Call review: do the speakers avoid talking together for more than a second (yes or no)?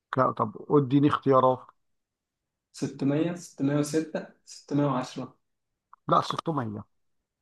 yes